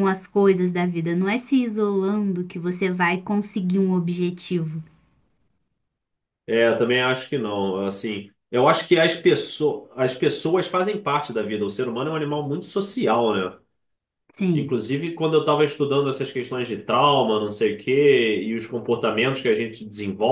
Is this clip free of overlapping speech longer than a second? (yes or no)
yes